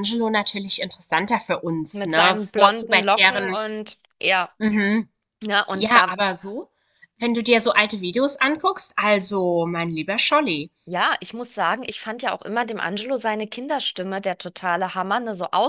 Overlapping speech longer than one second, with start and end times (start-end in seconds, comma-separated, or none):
1.9-3.6